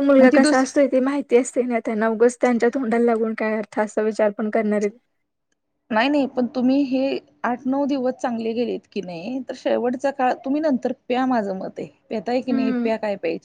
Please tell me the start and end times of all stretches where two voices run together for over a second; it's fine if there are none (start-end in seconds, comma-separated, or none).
none